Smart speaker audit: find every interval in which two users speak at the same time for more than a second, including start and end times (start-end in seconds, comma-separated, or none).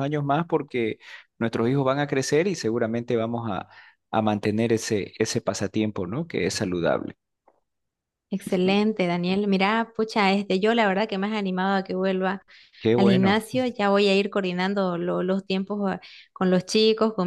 none